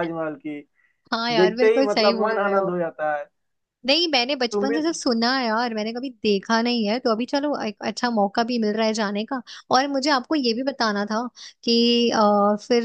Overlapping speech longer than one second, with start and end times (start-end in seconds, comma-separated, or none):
1.4-2.7